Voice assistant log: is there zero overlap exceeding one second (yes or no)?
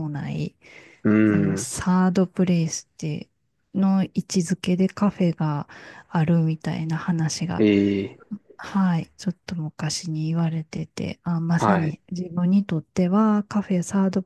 yes